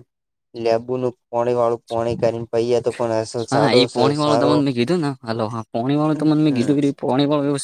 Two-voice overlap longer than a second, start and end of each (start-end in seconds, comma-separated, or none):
none